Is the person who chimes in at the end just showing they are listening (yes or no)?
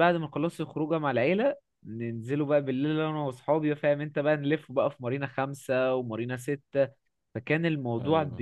yes